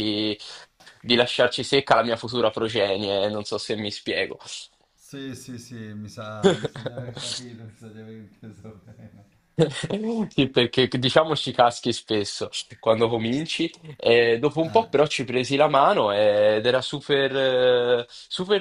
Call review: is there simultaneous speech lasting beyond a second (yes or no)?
no